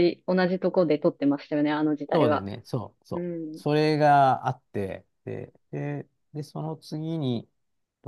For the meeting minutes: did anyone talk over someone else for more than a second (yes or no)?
no